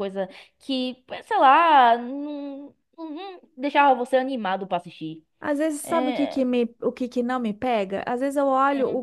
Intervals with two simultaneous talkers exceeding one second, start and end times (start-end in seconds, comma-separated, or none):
none